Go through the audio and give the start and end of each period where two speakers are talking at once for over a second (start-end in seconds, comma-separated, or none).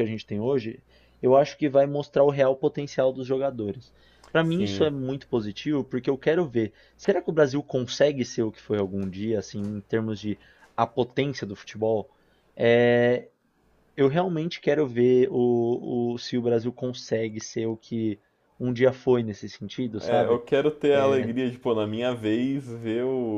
none